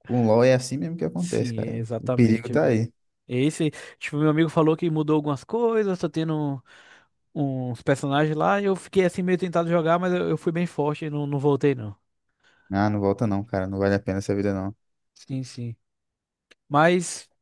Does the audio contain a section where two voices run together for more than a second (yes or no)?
yes